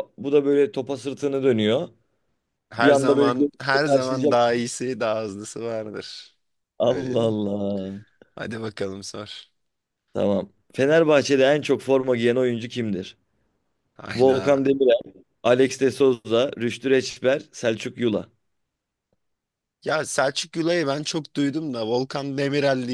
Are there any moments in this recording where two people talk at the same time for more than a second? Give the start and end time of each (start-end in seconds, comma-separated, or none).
2.8-4.4